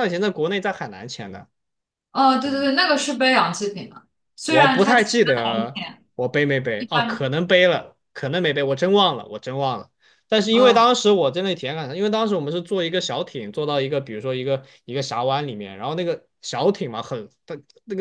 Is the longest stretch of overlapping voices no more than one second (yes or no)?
no